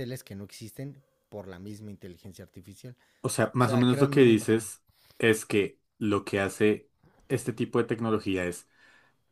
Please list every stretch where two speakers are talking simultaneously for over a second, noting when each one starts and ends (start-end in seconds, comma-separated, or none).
3.4-4.6